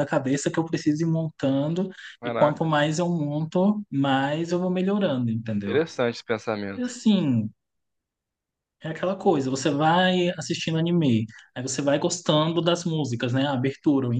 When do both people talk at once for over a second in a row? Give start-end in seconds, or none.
none